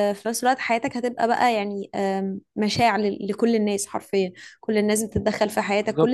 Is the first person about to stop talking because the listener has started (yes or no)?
no